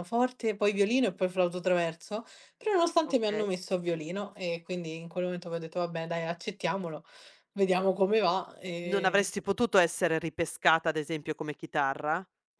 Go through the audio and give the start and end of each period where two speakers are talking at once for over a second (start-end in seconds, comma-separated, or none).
none